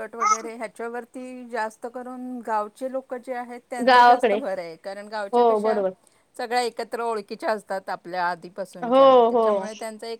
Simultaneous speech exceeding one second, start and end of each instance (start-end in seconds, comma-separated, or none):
none